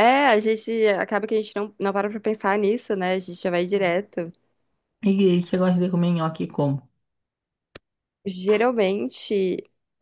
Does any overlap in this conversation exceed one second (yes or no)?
no